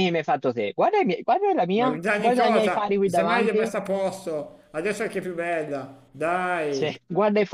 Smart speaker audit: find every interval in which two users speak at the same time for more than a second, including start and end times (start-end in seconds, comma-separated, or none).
1.8-3.7